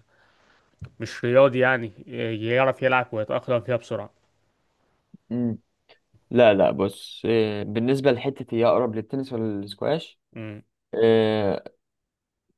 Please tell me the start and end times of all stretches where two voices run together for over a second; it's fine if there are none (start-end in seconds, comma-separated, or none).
none